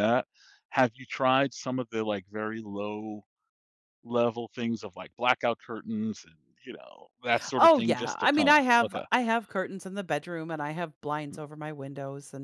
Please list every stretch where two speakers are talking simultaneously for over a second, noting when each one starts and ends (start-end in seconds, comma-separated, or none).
7.6-9.0